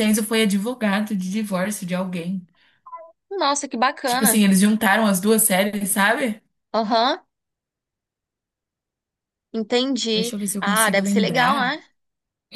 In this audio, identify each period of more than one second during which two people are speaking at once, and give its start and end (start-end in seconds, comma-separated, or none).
10.1-11.8